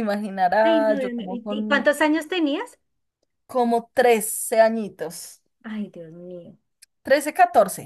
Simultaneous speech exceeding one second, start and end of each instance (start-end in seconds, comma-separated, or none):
0.6-1.9